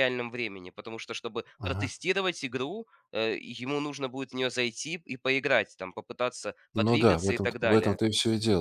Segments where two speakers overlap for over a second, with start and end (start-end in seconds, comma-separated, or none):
6.8-8.0